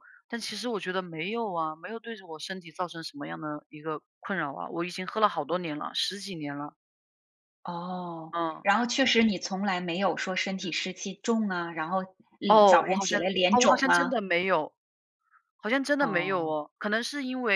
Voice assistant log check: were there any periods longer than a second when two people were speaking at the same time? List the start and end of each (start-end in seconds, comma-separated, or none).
12.5-14.2